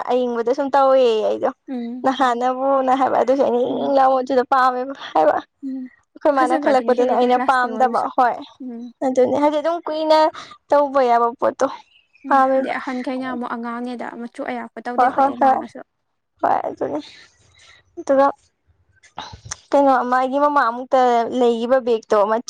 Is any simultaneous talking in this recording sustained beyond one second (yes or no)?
yes